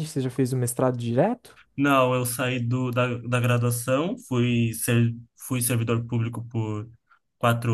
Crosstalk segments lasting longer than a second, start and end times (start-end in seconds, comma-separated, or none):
none